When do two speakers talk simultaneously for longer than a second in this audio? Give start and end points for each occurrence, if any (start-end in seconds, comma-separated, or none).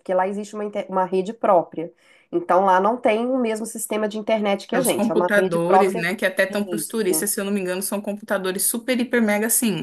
4.8-6.1